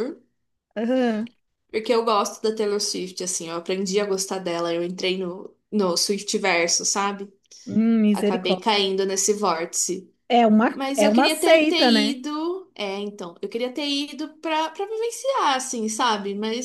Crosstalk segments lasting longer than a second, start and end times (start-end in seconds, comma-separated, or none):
10.7-12.2